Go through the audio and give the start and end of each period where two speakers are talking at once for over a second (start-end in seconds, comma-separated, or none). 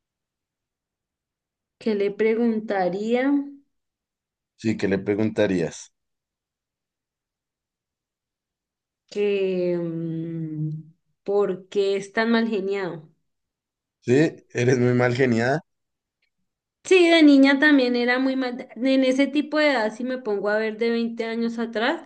none